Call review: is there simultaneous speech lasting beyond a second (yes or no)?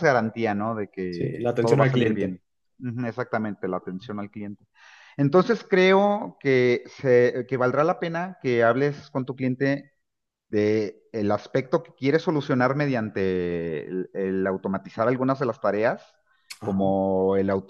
yes